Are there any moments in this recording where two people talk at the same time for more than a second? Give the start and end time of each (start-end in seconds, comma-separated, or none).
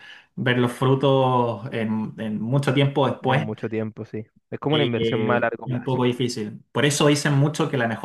4.7-6.3